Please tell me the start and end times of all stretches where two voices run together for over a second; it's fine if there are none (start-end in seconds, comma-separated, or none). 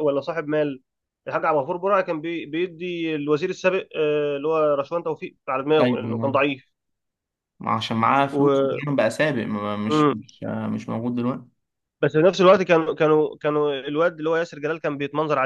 none